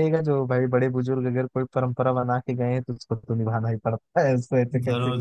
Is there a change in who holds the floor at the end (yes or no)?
yes